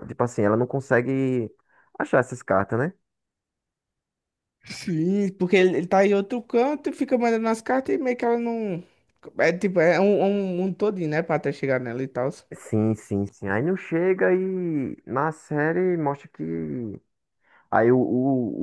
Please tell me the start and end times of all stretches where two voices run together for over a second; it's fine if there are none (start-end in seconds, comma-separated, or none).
none